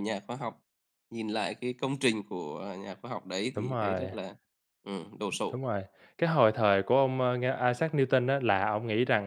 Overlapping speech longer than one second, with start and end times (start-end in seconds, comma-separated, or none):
none